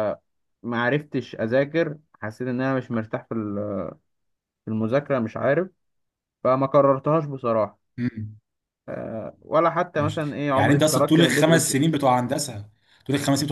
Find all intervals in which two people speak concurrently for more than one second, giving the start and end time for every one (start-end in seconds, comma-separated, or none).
9.9-11.8